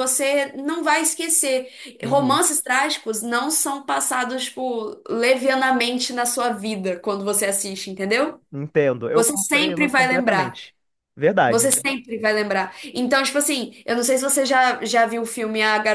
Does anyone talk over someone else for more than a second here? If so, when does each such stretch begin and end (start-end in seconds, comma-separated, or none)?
9.1-10.6